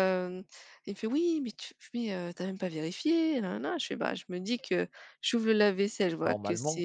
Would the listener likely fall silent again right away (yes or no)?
yes